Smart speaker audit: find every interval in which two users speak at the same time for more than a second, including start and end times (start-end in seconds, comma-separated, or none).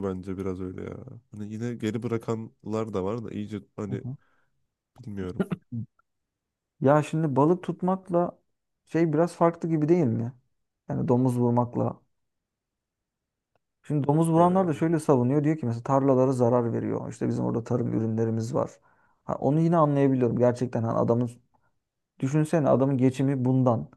none